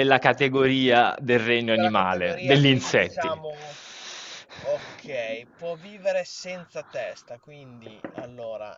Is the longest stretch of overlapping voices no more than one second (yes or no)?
no